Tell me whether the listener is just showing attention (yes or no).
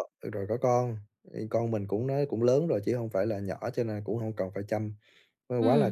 yes